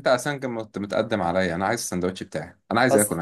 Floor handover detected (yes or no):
yes